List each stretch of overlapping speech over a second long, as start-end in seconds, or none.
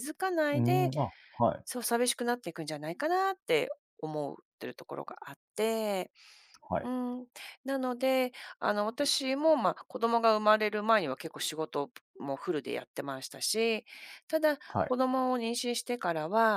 none